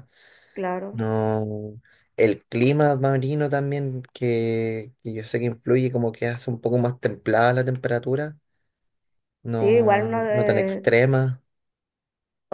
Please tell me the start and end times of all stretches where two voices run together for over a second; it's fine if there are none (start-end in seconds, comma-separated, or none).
9.5-10.9